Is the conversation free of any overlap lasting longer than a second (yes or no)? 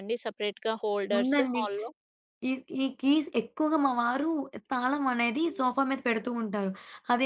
yes